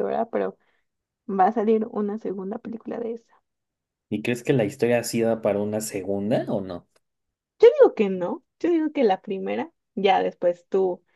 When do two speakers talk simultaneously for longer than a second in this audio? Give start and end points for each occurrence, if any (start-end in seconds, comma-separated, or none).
none